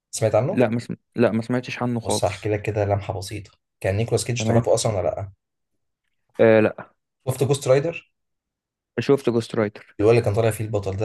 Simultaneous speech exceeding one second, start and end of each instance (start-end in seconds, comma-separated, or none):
none